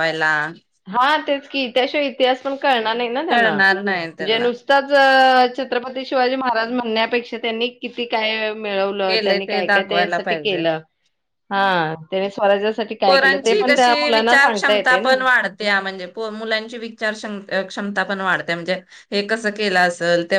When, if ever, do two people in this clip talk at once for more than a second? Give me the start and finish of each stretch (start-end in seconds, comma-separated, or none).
9.1-10.6